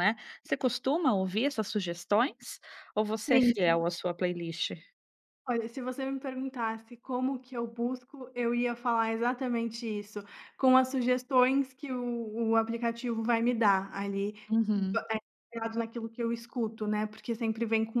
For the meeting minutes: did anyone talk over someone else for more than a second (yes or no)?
no